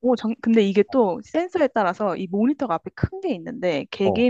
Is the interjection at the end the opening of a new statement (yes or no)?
no